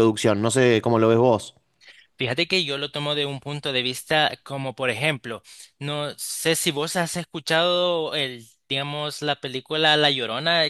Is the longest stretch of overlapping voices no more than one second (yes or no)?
yes